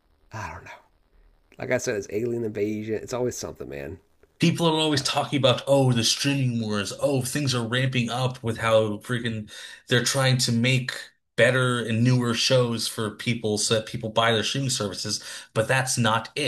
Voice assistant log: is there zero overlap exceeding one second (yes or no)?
yes